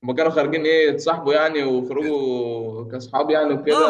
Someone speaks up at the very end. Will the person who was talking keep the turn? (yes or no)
no